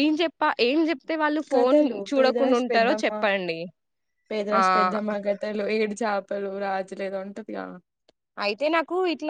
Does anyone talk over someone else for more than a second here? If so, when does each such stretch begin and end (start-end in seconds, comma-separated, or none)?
1.5-3.1